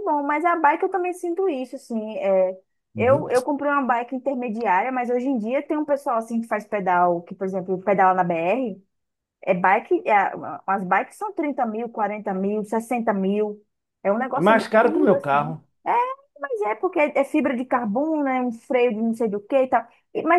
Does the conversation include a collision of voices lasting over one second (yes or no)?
yes